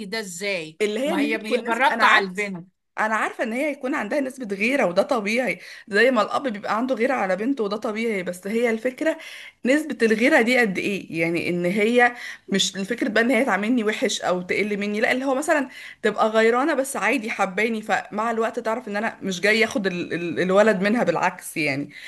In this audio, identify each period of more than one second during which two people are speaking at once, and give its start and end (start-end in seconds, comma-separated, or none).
0.8-2.3